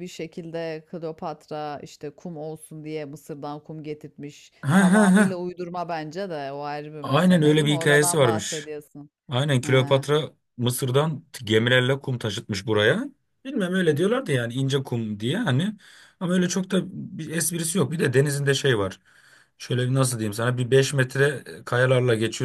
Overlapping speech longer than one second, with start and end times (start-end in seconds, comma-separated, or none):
7.0-8.7